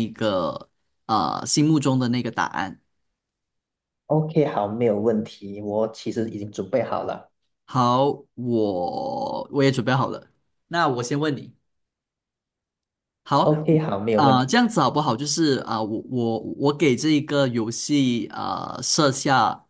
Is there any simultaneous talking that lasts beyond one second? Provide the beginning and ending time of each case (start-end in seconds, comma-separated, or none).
none